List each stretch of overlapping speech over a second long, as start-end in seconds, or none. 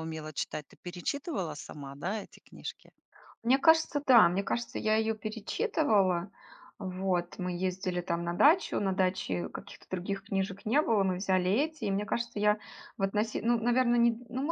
none